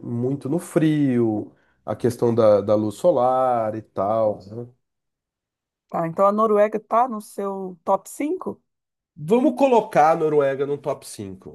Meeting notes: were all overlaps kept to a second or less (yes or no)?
yes